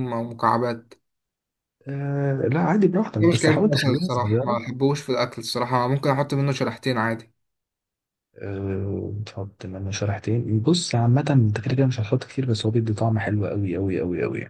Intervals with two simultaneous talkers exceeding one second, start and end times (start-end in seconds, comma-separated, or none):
3.2-4.6